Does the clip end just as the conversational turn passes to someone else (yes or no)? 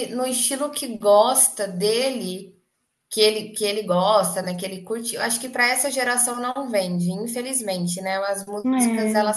no